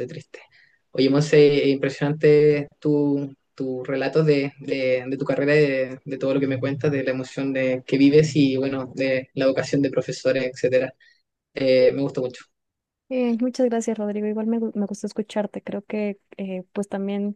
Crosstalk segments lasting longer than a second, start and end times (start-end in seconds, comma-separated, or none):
none